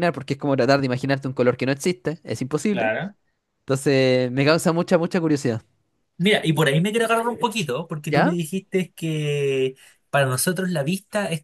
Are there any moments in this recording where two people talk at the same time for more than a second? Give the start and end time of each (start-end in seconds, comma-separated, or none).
none